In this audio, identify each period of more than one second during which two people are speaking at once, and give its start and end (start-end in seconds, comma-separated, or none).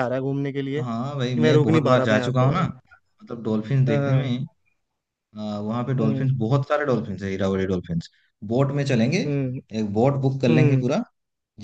0.8-2.6